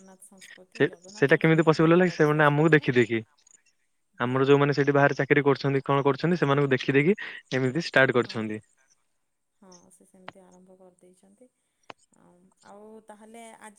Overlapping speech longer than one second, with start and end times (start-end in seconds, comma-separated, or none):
0.8-2.9